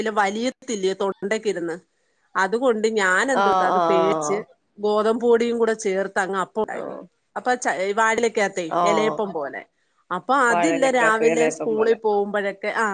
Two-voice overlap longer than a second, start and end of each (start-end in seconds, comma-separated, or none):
10.5-12.0